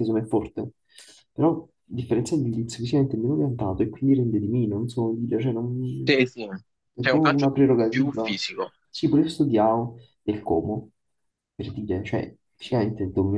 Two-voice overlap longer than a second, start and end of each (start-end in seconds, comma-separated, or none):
7.0-8.4